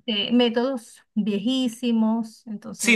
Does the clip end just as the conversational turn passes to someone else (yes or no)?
yes